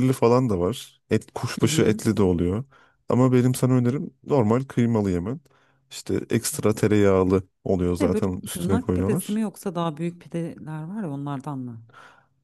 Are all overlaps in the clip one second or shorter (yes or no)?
no